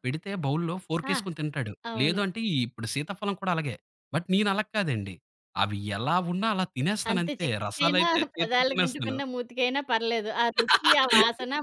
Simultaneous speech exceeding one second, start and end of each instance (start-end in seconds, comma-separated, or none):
7.1-9.2